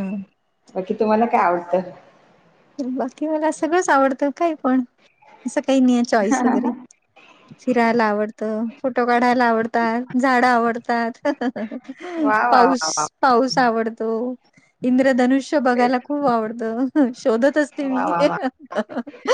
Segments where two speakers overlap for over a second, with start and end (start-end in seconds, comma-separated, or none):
none